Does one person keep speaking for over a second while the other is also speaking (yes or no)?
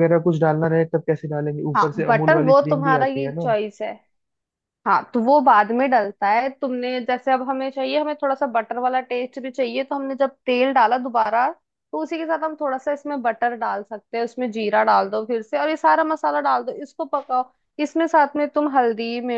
yes